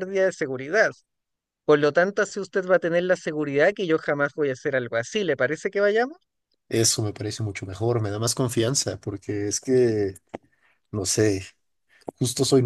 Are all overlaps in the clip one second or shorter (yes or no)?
yes